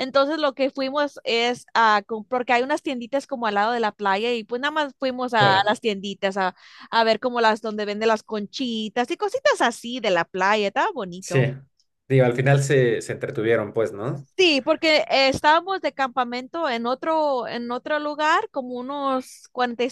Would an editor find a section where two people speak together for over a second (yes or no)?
no